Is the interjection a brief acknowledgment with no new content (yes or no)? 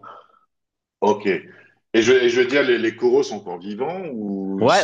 no